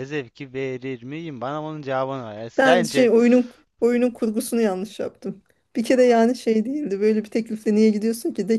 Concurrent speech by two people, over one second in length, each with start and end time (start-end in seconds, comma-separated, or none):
none